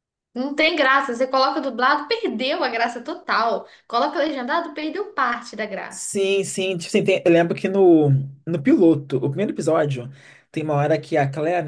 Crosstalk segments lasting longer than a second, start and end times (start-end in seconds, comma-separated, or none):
none